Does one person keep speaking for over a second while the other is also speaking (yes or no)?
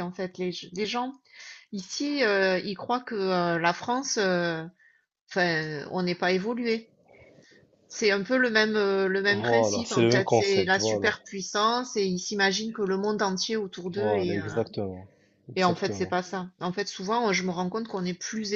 yes